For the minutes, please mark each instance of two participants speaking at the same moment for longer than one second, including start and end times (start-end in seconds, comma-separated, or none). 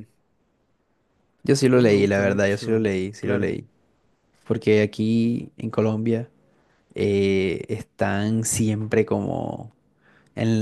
1.7-3.5